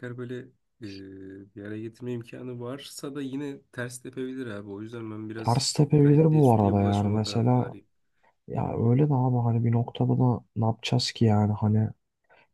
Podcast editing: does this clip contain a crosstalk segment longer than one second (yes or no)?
yes